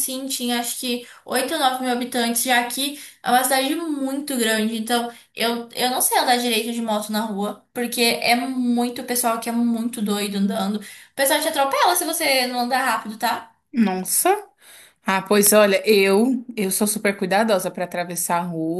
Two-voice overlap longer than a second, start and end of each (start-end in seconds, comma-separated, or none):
none